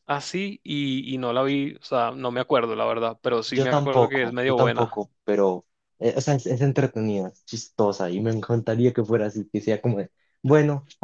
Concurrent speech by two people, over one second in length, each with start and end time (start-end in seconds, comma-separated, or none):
3.5-5.0